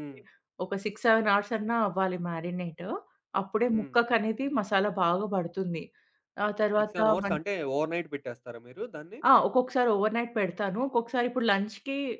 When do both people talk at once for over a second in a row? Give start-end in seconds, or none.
none